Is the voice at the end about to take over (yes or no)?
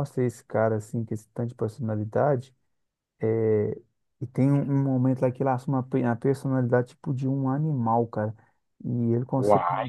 no